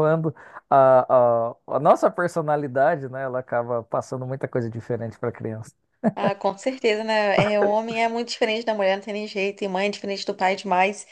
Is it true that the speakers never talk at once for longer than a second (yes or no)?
yes